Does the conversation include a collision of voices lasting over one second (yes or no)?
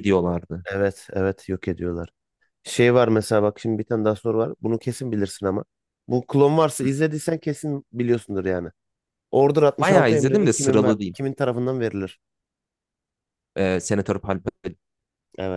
yes